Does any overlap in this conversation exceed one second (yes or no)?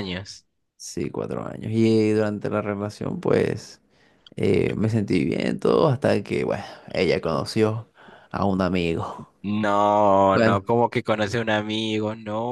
no